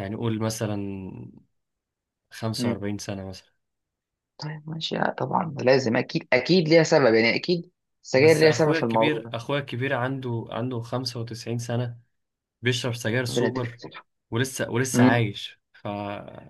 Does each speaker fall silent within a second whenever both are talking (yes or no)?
no